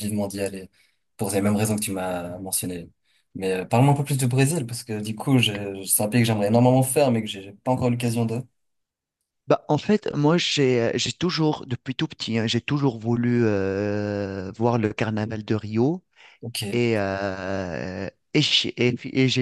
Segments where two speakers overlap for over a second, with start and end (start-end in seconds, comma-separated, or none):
none